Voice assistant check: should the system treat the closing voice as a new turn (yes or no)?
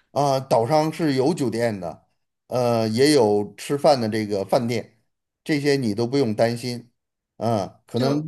no